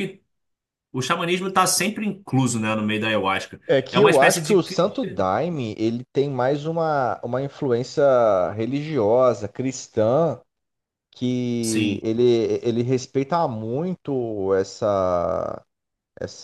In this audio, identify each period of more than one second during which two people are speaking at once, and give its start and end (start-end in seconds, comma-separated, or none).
3.7-5.3